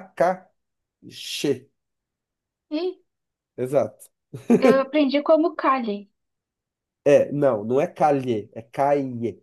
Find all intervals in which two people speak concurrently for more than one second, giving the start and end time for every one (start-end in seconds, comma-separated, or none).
none